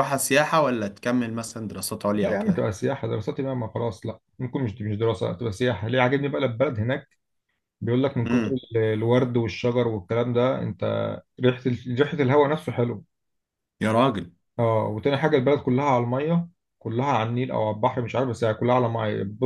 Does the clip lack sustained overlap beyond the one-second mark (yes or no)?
yes